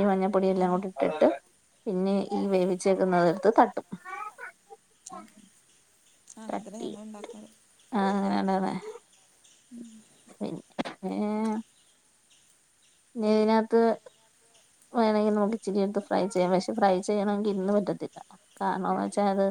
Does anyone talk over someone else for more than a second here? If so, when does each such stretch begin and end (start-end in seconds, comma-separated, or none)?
none